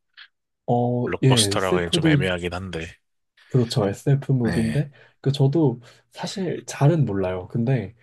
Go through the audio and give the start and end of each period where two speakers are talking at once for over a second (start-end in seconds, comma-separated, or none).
1.1-2.3